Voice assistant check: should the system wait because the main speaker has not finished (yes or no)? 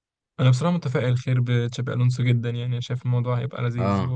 yes